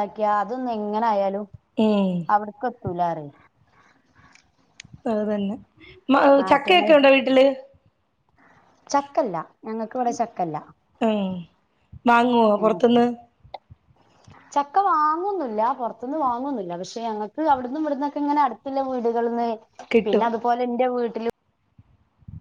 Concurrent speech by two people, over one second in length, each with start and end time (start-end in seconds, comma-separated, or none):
none